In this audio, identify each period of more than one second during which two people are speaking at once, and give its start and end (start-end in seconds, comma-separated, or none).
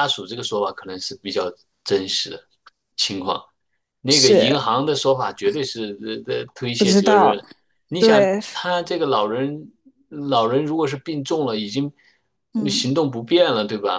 none